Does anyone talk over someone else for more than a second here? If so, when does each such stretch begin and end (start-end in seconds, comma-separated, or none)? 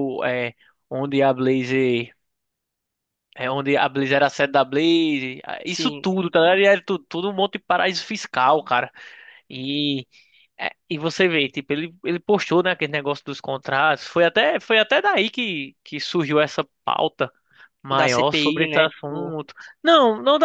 18.0-19.4